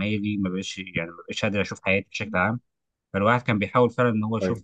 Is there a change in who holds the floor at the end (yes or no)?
no